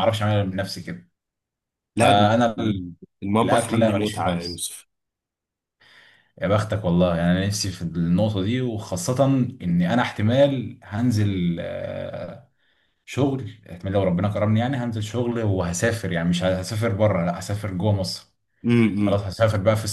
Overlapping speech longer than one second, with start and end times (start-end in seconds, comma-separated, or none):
3.4-4.7